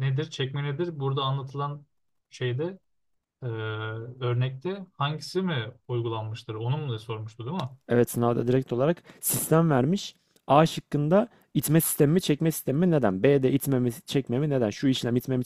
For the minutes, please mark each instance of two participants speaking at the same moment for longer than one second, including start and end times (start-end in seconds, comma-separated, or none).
none